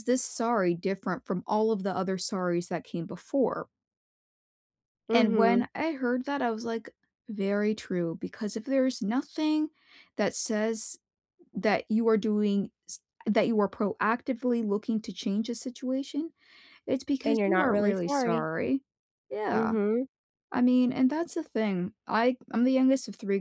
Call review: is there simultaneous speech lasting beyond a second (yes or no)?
yes